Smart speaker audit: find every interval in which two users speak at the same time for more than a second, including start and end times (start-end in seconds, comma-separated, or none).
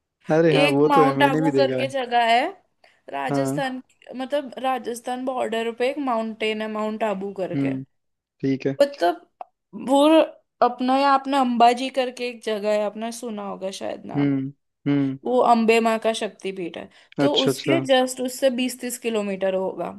0.6-1.9